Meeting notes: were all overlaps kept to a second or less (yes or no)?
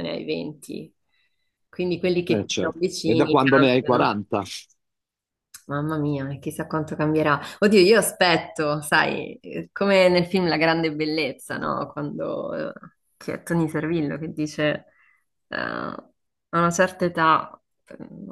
no